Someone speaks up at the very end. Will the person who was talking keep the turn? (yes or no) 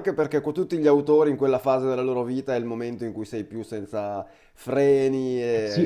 no